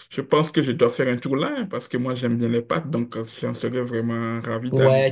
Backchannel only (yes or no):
no